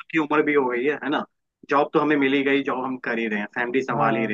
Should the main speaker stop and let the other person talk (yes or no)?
no